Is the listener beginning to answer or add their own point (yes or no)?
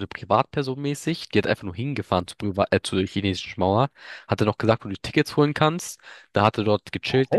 no